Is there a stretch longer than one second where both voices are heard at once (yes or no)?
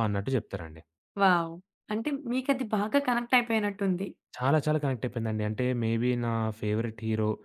no